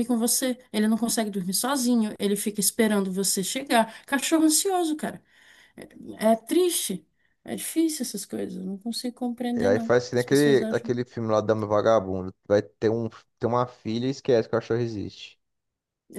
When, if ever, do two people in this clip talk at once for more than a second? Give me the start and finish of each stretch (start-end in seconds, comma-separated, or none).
9.6-10.9